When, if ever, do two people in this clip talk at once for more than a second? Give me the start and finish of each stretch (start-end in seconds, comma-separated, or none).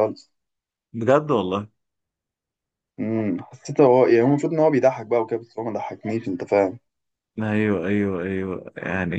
none